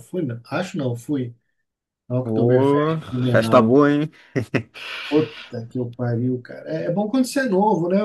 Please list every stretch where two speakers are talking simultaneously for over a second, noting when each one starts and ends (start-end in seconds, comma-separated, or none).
2.2-3.8